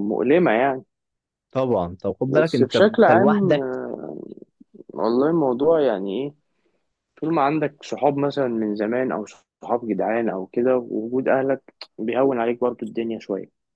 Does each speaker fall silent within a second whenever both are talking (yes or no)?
no